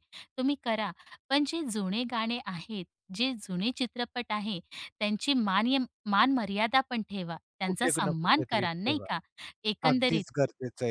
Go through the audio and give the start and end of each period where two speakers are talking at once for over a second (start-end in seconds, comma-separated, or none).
7.6-9.1